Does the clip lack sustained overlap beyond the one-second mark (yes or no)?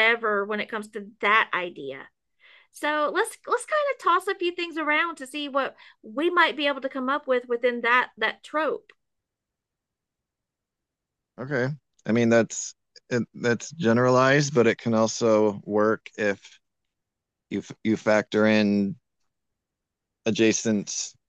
yes